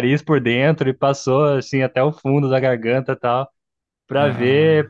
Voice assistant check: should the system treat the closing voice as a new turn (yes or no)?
no